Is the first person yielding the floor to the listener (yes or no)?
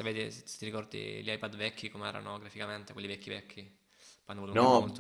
yes